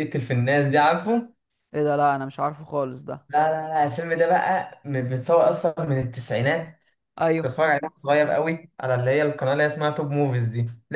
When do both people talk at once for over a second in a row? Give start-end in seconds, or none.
none